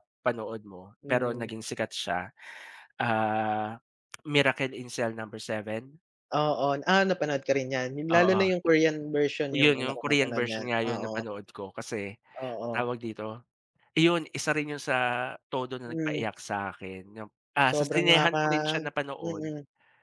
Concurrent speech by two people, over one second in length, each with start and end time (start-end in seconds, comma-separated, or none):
9.5-11.2, 17.7-19.5